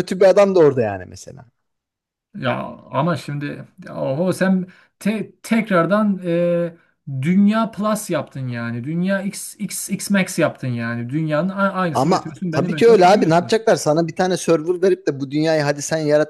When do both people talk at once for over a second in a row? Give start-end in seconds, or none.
11.9-13.6